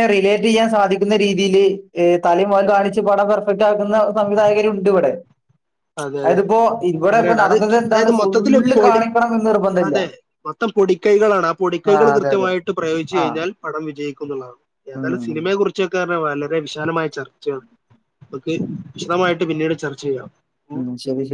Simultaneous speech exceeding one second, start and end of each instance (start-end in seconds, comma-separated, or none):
7.1-9.0